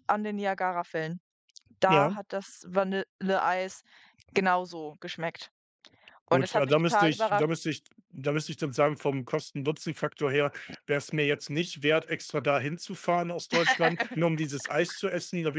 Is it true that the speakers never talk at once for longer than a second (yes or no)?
no